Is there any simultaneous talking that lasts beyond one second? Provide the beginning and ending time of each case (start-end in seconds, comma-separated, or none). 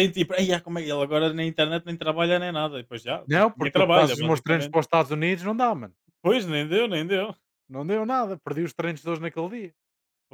3.3-4.8